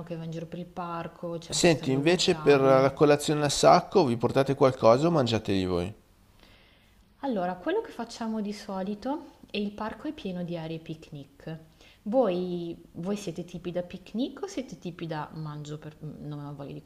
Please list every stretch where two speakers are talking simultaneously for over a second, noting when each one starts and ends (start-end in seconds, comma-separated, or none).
1.5-3.0